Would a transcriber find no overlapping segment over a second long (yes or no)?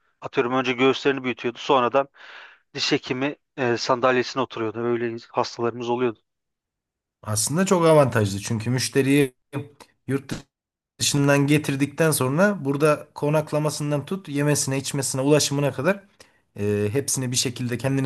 yes